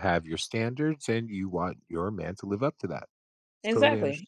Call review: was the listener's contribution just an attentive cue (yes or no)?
no